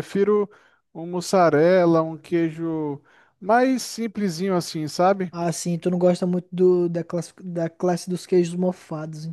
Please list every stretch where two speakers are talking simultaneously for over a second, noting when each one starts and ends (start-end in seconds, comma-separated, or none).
none